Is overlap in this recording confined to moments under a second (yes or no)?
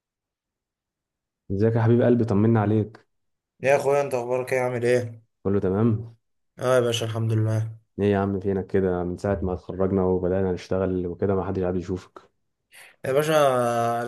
yes